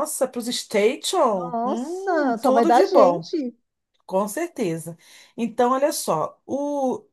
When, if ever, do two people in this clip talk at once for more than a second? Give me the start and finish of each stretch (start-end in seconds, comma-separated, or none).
1.3-3.3